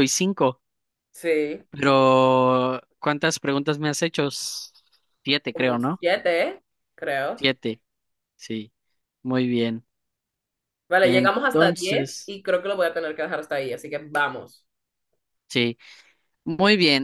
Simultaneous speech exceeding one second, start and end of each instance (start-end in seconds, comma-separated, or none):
11.0-12.3